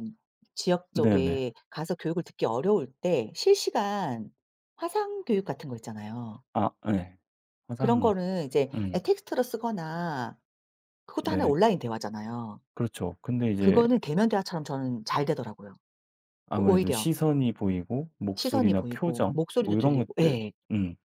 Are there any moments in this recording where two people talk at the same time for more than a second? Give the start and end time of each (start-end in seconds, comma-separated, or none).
18.3-20.5